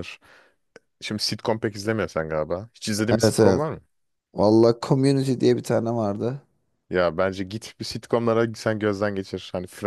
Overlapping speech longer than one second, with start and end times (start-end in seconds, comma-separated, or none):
none